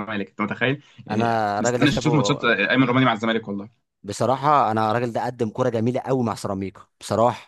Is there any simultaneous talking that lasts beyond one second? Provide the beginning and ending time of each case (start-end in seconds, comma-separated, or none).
1.1-2.4